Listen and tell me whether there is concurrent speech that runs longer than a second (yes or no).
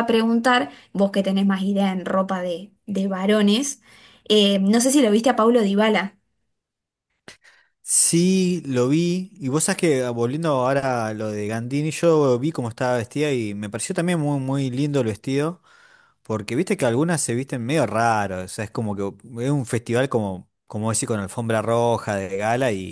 no